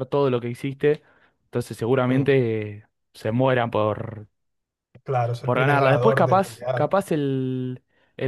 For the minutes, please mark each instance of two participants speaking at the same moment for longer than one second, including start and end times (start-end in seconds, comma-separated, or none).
5.4-6.9